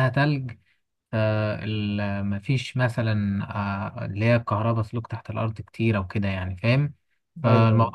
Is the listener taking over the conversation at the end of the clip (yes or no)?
no